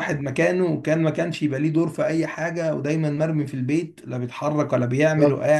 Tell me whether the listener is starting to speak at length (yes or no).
no